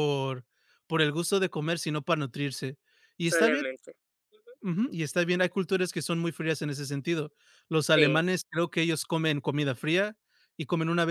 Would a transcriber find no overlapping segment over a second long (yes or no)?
yes